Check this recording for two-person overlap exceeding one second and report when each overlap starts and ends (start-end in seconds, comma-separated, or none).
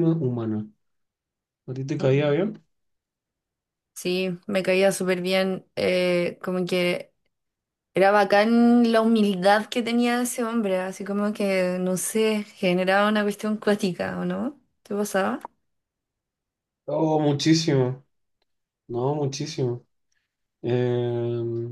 none